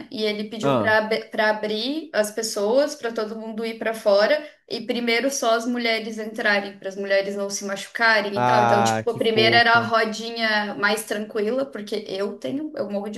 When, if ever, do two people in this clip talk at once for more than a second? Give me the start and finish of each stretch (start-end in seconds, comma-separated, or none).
8.3-9.9